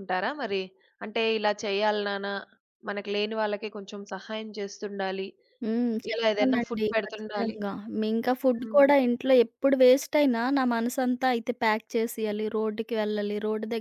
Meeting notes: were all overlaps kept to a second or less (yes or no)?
no